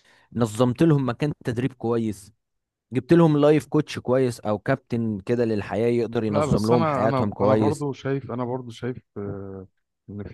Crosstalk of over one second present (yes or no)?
yes